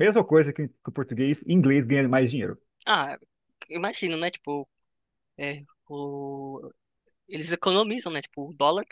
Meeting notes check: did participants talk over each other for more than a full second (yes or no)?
no